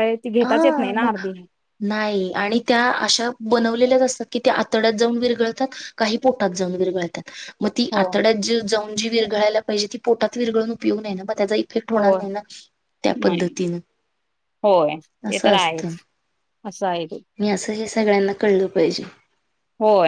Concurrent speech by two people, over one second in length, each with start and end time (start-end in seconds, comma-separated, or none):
none